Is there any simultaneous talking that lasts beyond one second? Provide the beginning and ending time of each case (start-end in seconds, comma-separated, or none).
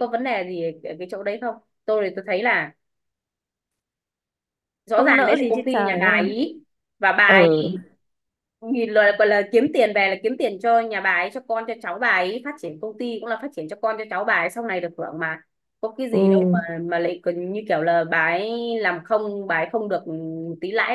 4.9-6.4